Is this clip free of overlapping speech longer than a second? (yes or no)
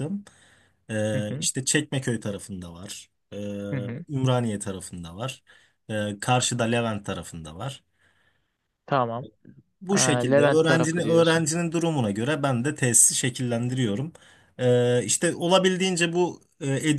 no